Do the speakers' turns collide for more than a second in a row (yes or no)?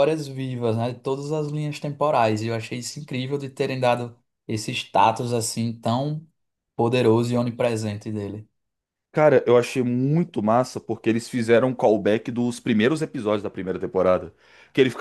no